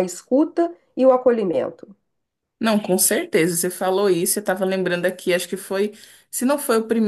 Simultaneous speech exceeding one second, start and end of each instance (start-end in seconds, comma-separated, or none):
none